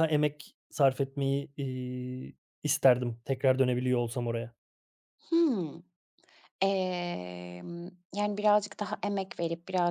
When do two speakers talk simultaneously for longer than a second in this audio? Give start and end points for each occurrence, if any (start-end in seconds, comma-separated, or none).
none